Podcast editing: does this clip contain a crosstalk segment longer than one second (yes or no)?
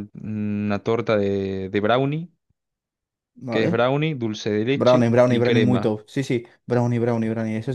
yes